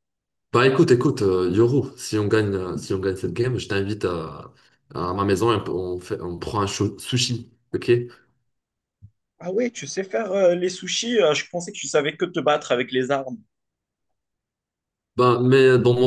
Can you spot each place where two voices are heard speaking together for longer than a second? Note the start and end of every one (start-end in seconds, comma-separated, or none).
none